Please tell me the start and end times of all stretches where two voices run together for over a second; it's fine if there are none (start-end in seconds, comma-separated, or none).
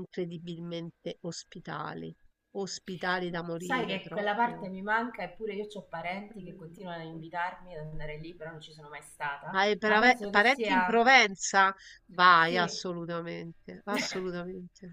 3.3-4.7, 9.6-11.1